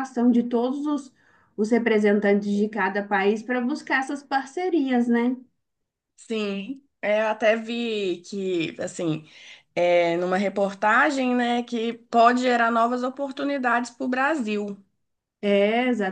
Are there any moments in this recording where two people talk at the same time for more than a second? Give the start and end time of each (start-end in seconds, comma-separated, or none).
none